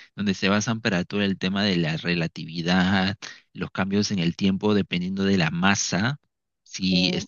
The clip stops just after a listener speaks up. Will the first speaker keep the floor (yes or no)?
yes